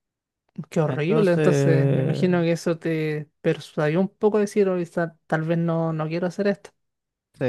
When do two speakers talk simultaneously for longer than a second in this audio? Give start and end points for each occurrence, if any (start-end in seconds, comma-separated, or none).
0.9-2.3